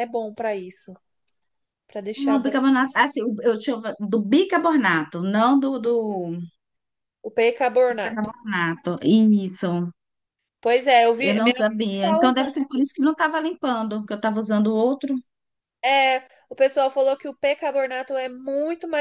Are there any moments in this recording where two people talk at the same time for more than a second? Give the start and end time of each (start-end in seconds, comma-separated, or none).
11.2-12.6